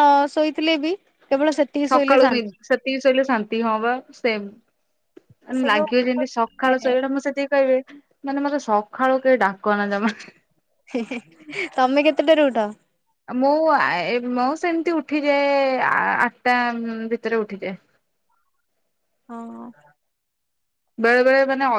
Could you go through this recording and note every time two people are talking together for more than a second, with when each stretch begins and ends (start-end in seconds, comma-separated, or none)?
5.6-6.9